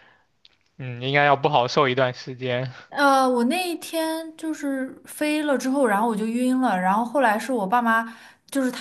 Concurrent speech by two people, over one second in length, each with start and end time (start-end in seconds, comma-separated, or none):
none